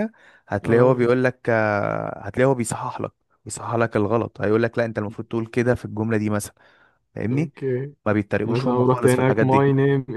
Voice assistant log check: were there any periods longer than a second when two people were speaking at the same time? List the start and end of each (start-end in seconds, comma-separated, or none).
8.4-9.7